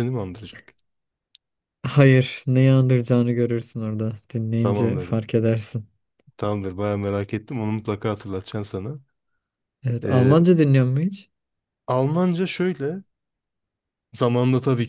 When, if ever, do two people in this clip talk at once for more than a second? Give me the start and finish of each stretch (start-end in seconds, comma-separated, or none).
none